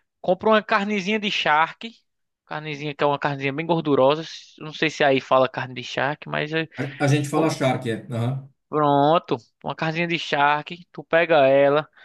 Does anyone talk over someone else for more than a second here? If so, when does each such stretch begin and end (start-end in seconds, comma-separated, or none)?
none